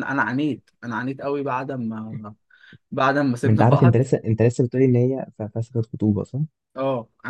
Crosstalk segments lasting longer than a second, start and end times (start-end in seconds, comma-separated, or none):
none